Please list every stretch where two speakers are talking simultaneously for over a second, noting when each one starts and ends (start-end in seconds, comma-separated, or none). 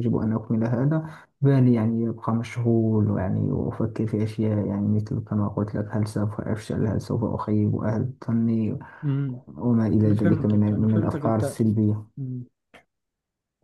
10.0-11.6